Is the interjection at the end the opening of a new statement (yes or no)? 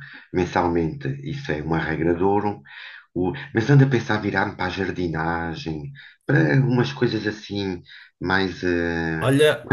yes